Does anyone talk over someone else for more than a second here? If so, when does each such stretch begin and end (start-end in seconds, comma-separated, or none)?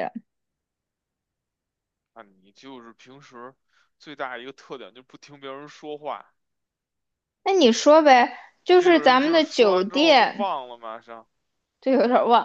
8.7-10.5